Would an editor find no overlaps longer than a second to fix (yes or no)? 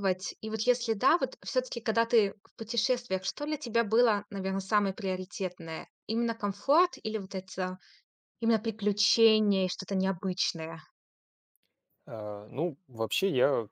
yes